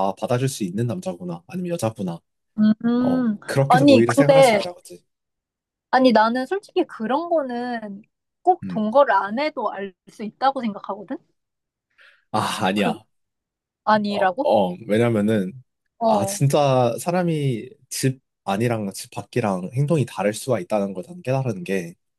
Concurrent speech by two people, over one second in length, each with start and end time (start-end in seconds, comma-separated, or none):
3.0-4.6